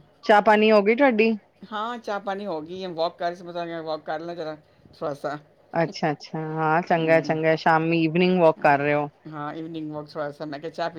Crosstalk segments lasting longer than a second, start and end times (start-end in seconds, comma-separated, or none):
none